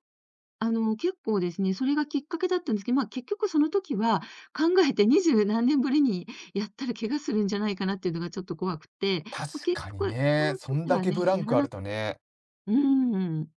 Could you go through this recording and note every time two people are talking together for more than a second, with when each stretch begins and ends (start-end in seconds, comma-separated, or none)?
9.3-11.7